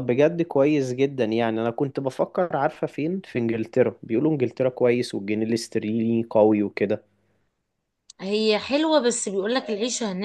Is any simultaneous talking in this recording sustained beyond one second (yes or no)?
no